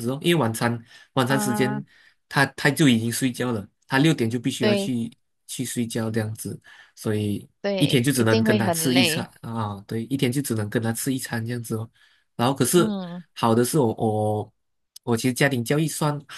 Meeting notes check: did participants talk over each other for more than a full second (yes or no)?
yes